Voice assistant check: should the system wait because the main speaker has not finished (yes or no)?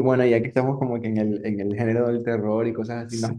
yes